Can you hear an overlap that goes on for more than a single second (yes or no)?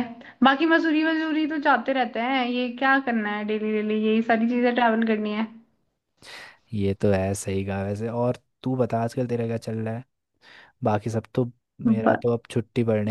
no